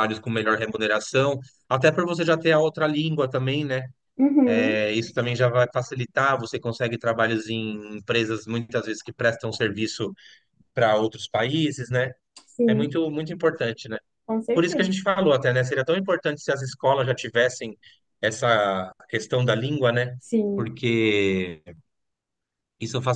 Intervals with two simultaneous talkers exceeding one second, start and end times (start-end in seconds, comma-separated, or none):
none